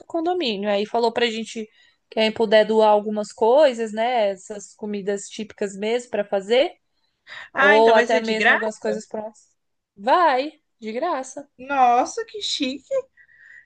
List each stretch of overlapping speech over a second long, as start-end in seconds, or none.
7.5-8.9